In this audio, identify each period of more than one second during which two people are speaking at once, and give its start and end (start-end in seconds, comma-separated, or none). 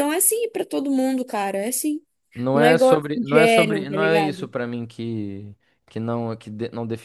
2.5-4.5